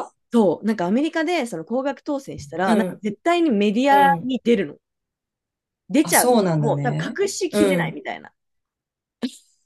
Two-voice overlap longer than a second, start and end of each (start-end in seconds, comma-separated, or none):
6.0-8.0